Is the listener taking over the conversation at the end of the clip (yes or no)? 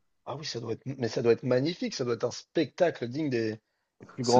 yes